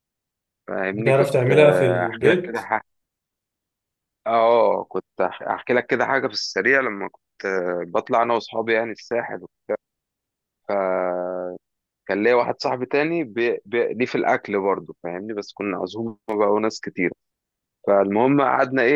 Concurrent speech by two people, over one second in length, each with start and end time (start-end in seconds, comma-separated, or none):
0.9-2.7